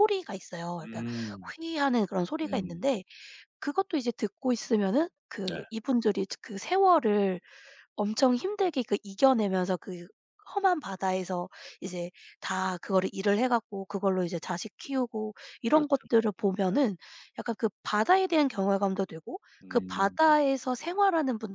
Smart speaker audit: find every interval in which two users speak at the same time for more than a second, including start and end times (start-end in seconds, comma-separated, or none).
none